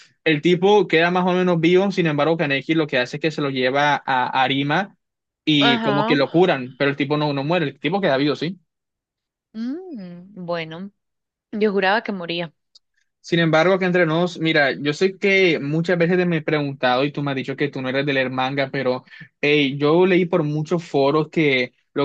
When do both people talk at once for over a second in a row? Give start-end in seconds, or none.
none